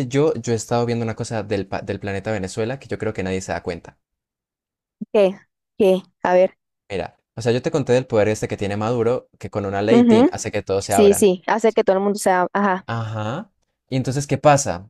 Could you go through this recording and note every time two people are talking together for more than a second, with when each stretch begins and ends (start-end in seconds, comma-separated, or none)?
9.9-11.3